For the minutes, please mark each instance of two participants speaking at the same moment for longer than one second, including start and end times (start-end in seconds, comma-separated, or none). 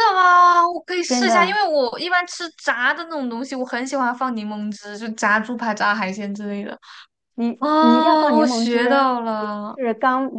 7.6-9.5